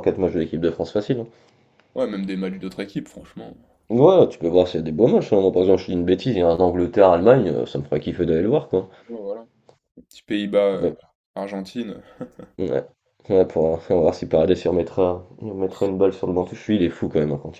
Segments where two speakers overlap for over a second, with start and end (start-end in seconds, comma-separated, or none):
none